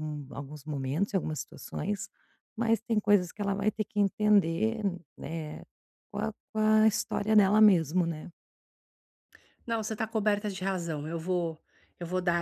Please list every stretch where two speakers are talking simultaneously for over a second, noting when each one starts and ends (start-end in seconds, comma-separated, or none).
none